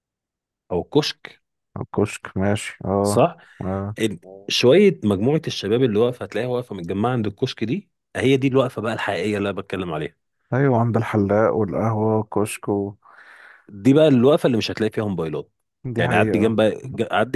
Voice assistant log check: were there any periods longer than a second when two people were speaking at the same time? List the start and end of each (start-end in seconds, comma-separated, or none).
none